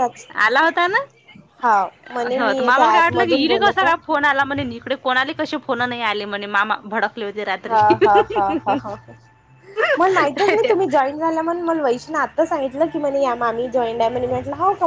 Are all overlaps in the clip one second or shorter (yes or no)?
no